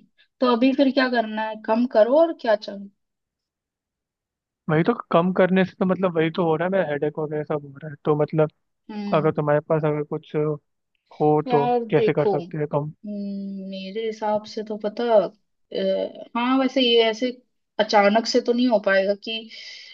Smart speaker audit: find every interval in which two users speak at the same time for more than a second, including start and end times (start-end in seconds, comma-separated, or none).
11.5-12.9